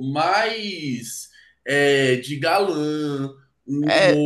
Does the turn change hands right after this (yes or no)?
yes